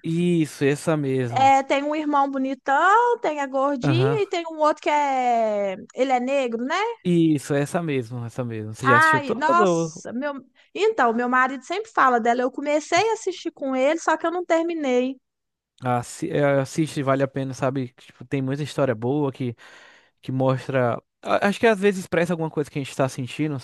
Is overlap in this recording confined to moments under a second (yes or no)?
no